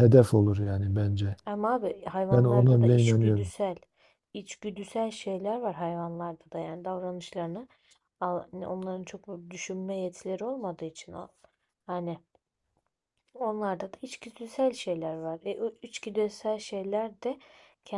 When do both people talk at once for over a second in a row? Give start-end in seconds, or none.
2.3-3.5